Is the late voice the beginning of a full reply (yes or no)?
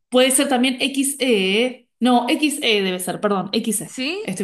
yes